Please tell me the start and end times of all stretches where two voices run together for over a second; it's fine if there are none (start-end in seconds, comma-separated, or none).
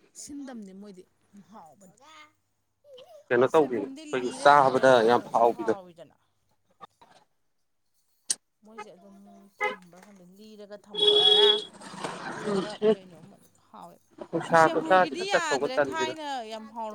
3.4-5.7, 14.8-16.1